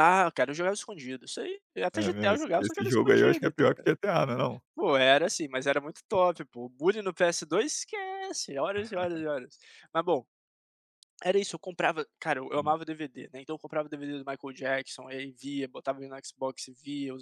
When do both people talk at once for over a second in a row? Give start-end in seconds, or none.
1.9-3.9